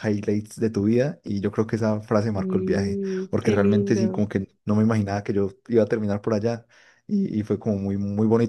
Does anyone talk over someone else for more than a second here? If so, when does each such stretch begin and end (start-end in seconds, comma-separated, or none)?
2.3-4.2